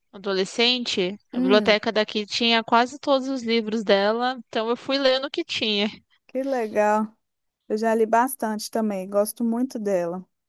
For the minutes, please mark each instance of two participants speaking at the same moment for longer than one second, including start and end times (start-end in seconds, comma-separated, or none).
none